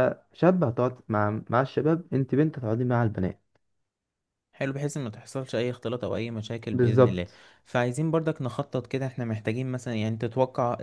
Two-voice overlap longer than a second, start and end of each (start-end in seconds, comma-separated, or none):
none